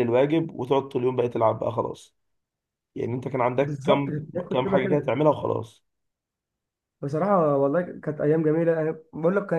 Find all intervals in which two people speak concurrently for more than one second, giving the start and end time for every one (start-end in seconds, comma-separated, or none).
3.6-5.1